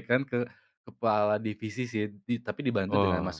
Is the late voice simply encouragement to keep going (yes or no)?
yes